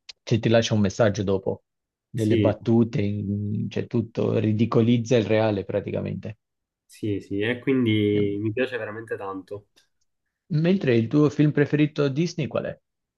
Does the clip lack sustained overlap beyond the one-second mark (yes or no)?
yes